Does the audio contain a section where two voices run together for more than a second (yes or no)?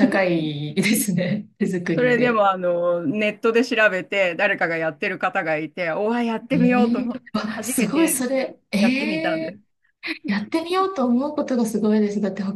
yes